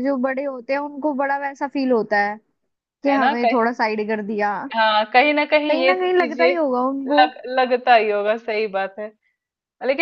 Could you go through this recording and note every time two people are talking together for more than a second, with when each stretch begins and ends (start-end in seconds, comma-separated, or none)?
5.7-7.2